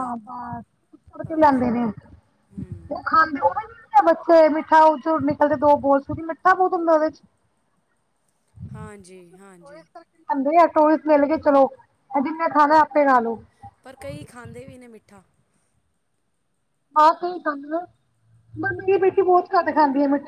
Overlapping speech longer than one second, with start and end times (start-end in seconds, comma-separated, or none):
none